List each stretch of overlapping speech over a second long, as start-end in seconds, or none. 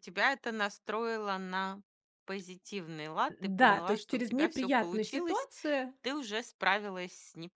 3.4-5.5